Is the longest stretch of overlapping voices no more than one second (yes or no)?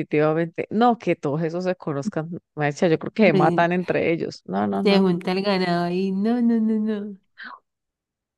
yes